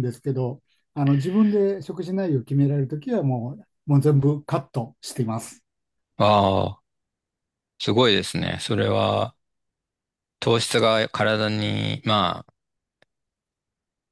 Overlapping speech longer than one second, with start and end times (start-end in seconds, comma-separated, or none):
none